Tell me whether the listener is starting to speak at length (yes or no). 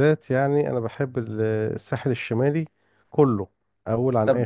yes